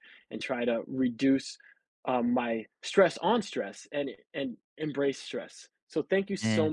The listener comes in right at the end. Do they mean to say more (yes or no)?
no